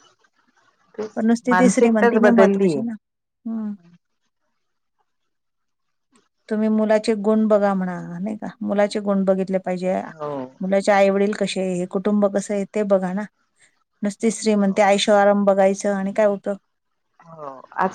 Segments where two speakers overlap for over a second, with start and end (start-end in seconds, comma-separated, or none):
1.1-2.8